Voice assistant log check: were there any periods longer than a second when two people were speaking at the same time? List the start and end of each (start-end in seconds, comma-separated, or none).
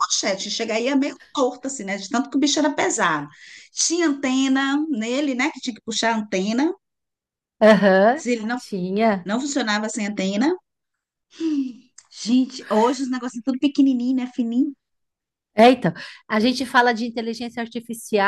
none